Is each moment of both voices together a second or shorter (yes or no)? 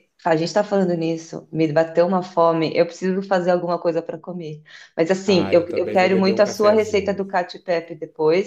no